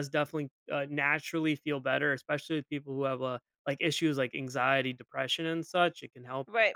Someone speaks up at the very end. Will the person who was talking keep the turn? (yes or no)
yes